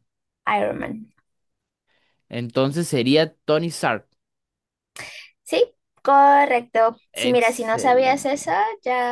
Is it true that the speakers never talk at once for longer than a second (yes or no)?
no